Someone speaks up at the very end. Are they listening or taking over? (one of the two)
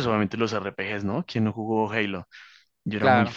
taking over